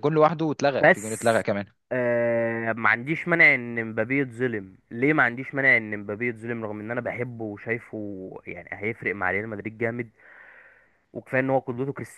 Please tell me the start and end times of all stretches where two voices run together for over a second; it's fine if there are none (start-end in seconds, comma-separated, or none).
none